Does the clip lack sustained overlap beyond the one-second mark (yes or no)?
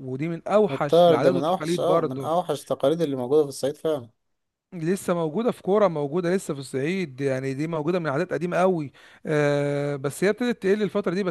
no